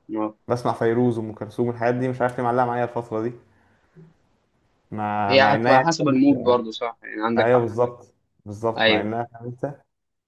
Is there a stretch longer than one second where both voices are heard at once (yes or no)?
yes